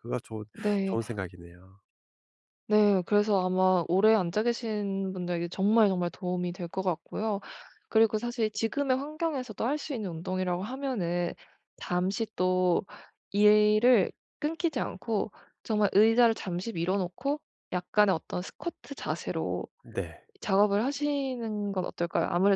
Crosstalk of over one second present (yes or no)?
no